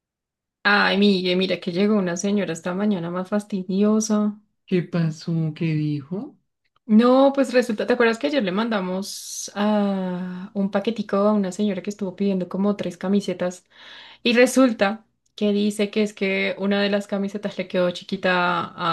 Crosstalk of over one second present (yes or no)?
no